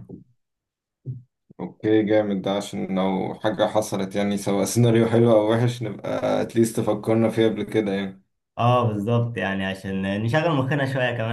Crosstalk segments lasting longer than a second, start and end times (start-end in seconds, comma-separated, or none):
none